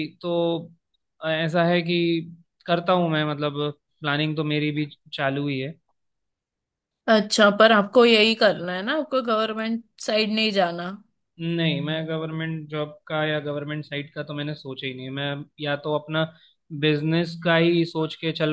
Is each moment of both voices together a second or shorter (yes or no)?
yes